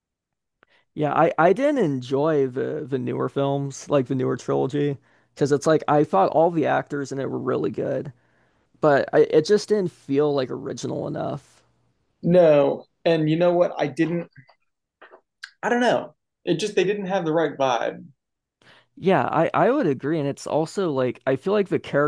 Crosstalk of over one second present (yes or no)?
no